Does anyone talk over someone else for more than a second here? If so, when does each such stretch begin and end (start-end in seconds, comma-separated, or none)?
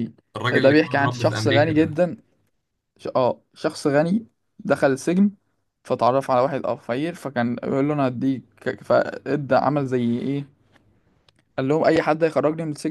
0.5-2.0